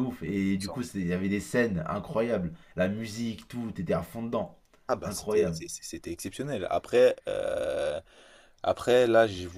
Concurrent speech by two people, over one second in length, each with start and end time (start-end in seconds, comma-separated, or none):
none